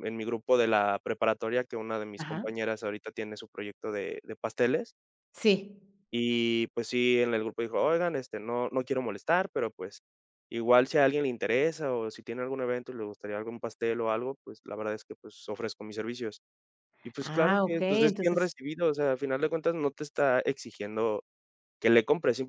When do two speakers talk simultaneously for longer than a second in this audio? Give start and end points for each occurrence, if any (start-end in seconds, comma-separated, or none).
17.2-18.5